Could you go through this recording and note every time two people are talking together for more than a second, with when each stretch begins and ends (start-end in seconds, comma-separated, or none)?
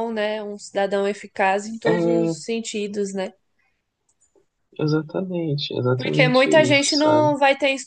6.0-7.3